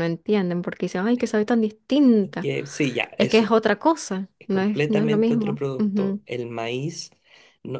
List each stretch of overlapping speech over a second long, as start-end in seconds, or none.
4.4-6.2